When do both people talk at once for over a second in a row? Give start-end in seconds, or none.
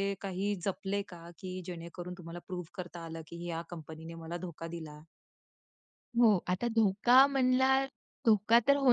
none